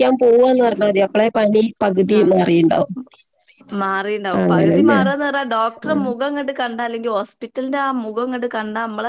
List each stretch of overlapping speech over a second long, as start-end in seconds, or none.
none